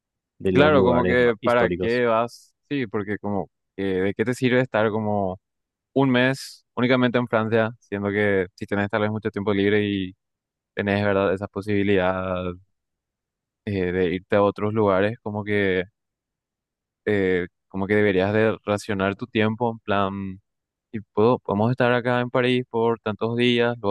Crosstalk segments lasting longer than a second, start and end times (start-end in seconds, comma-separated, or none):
0.5-2.0